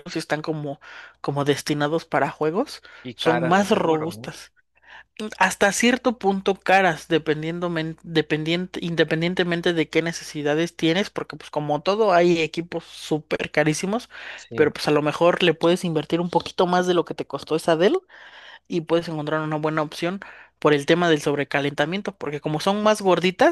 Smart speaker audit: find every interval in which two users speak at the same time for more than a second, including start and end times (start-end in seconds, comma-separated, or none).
3.0-4.3